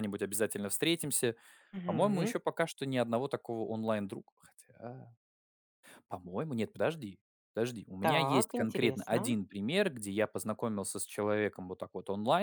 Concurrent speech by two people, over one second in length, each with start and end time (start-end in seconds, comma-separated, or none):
8.0-9.3